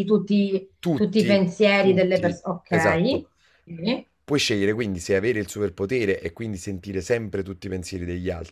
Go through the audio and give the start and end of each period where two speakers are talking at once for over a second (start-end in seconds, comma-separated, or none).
0.8-3.2